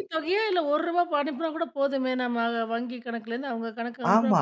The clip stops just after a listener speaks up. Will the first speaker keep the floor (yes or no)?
no